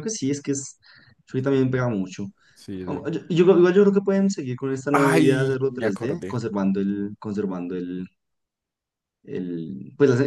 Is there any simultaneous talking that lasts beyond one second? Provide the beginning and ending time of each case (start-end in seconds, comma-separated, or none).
4.9-6.4